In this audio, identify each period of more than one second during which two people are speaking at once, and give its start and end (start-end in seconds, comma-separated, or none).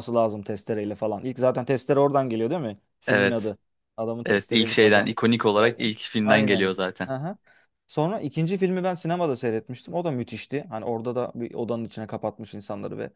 4.2-7.1